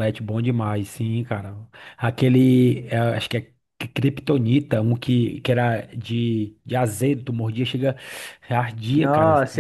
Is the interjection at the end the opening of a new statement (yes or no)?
yes